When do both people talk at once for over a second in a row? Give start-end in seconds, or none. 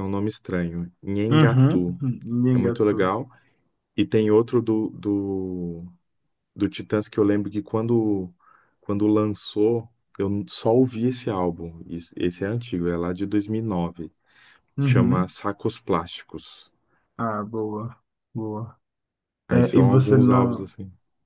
19.5-20.7